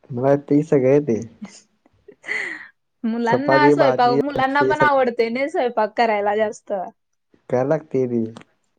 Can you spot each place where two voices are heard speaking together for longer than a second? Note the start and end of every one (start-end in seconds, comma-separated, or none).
3.3-5.0